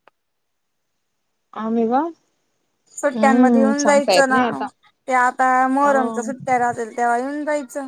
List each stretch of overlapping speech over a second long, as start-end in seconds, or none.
3.2-4.4